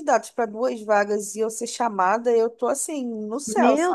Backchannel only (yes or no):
no